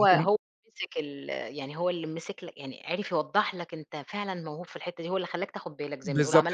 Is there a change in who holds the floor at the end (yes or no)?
yes